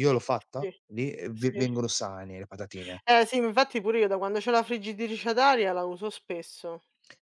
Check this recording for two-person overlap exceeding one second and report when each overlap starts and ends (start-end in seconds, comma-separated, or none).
none